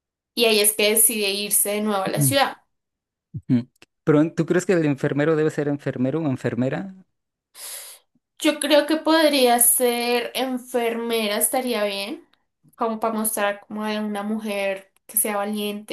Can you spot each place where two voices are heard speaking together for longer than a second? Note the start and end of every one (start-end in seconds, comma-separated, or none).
none